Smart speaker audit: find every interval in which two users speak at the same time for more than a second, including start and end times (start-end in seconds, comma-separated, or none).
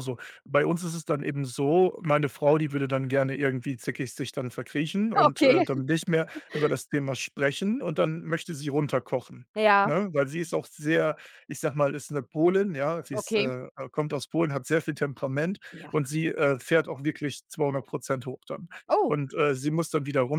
none